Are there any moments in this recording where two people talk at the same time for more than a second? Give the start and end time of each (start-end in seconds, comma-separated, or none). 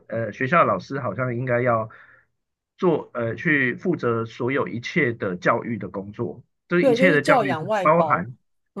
6.8-8.3